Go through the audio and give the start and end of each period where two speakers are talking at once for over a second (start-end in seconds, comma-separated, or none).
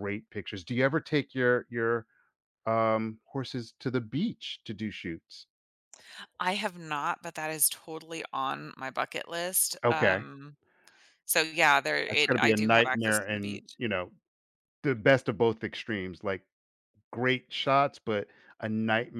12.1-13.8